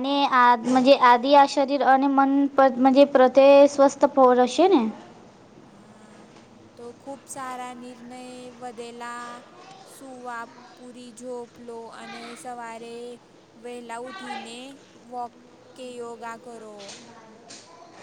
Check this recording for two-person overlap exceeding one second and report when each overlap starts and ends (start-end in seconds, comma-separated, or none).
none